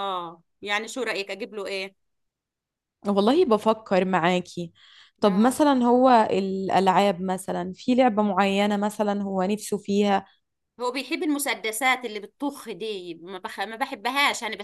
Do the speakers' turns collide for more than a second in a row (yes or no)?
no